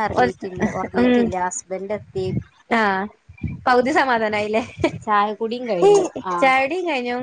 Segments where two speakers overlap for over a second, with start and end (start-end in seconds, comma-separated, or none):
none